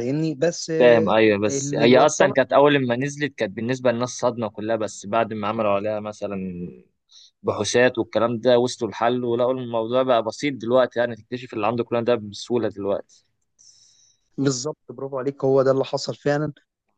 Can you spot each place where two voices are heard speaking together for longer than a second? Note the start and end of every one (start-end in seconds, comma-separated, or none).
0.8-2.4